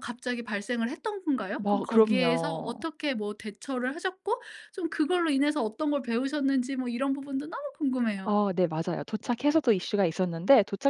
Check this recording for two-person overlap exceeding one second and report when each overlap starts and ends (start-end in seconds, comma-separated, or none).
1.6-2.9